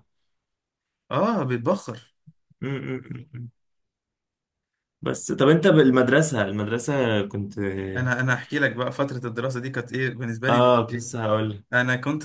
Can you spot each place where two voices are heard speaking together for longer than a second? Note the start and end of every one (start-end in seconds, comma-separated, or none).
none